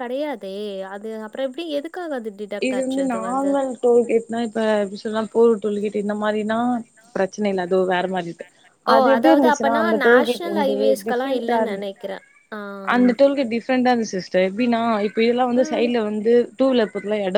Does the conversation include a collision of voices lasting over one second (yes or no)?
yes